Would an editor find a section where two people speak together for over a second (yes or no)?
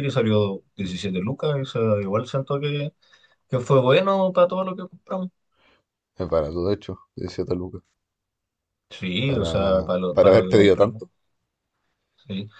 yes